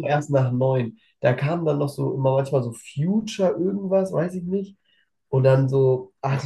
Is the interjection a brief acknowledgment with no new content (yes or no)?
yes